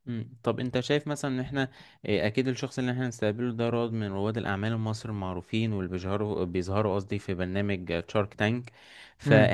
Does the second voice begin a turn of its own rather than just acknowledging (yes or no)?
no